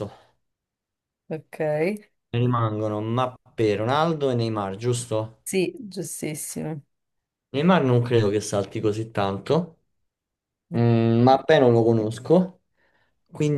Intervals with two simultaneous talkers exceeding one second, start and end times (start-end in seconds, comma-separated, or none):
none